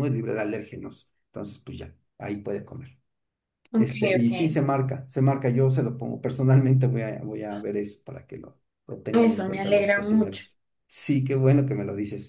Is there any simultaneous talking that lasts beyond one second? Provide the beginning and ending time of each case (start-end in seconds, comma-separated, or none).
9.1-10.4